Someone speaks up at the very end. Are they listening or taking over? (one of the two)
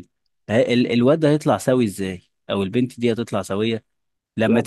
listening